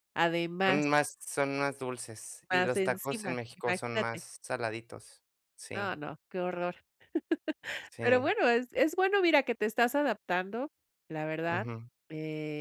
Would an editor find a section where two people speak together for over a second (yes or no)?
yes